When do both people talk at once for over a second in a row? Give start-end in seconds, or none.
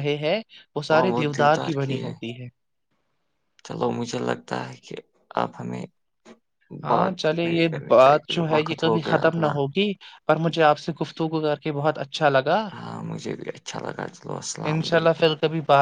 6.9-9.5